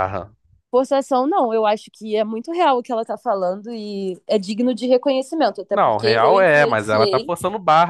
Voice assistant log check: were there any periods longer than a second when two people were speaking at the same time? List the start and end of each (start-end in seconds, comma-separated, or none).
5.7-7.3